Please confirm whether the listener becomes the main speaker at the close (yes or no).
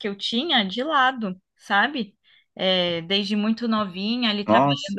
no